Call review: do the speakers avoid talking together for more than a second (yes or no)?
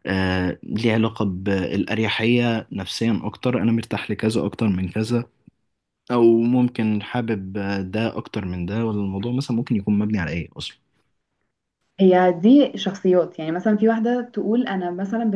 yes